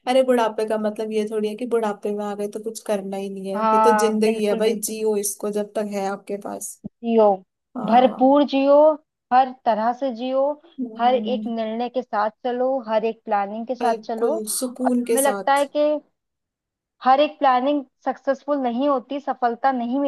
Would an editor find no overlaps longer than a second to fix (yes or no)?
no